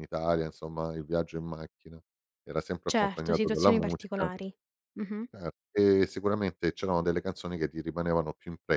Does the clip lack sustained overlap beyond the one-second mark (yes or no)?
no